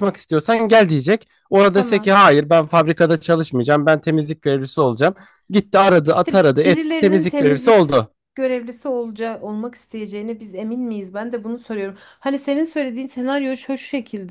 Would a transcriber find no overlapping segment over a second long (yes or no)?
no